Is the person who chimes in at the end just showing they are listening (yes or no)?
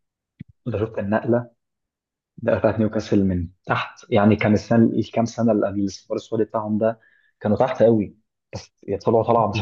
no